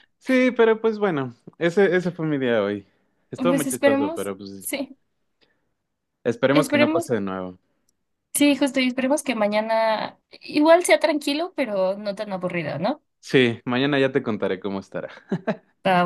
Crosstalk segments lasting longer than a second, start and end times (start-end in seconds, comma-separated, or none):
3.3-4.7